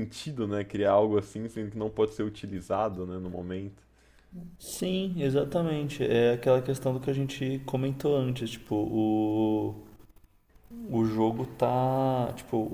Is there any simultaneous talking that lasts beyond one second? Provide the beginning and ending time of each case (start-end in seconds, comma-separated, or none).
none